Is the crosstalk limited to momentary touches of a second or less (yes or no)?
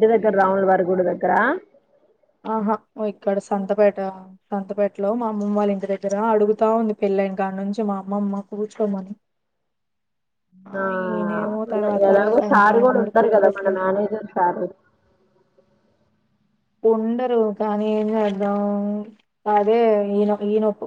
no